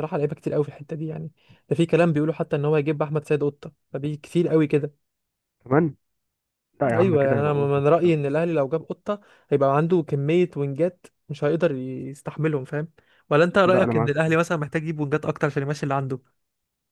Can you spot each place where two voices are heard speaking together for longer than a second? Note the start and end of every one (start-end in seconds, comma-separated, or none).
6.9-8.1